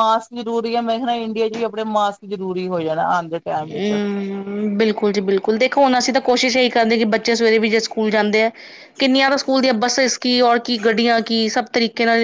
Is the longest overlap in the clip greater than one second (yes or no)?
no